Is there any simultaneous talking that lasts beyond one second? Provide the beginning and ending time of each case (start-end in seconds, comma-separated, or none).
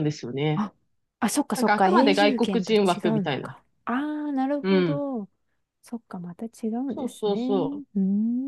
1.6-3.5